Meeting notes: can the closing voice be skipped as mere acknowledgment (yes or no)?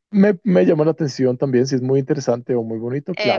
no